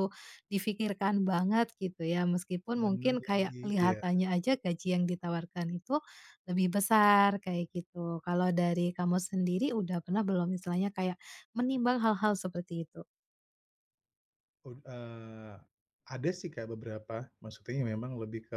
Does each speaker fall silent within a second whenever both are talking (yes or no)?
no